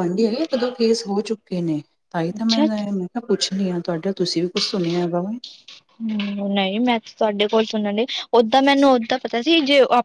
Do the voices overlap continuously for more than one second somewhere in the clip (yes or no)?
no